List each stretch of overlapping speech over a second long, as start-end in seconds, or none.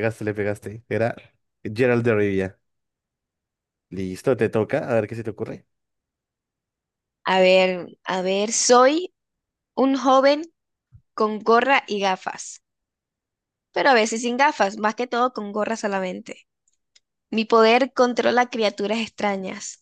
none